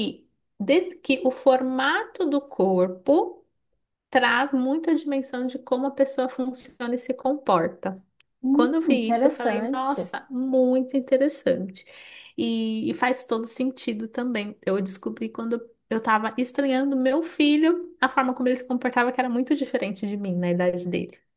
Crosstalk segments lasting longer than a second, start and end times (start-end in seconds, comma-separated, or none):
8.5-10.1